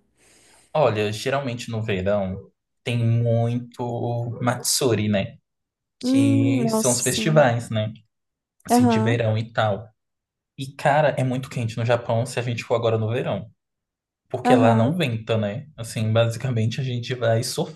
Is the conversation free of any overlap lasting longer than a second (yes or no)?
no